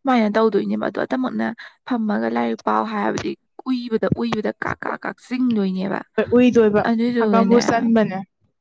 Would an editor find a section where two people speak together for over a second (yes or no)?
no